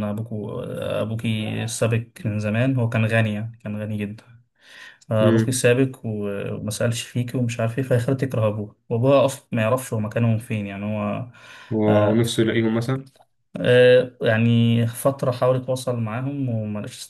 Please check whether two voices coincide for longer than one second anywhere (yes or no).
no